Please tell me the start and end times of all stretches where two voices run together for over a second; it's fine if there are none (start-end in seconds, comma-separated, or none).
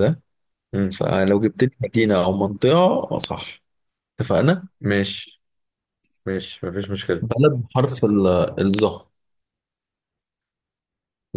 none